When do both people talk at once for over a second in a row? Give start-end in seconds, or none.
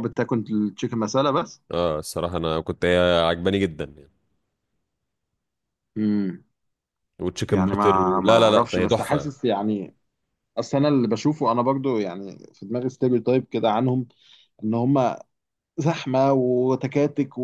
7.5-9.3